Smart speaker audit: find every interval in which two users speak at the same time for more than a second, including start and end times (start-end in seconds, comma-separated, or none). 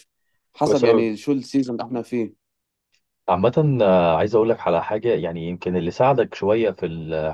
none